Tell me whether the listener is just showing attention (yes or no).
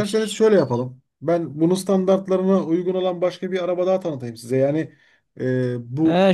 no